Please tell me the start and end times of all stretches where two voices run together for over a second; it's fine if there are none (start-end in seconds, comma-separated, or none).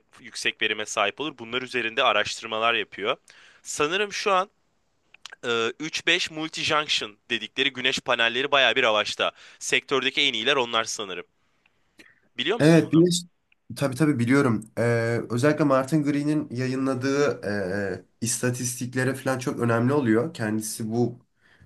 none